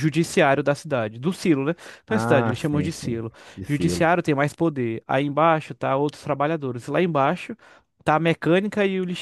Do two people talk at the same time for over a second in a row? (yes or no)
yes